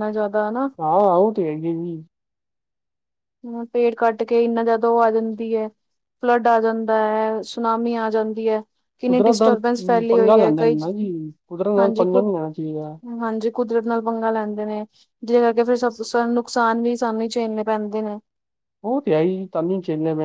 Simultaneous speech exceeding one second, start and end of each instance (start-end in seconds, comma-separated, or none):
9.1-10.8